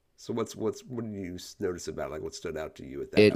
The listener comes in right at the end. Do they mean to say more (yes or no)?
yes